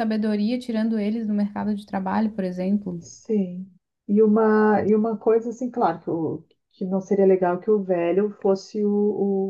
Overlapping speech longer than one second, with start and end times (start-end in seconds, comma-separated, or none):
none